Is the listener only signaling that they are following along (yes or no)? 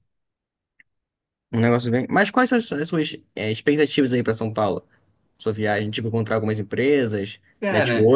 yes